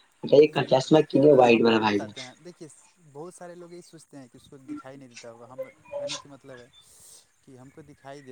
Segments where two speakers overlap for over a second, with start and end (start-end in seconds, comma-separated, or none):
none